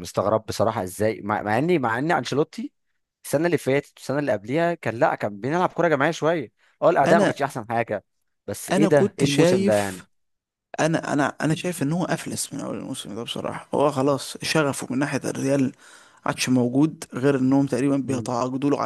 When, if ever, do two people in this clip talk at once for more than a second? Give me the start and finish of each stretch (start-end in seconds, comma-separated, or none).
8.7-10.0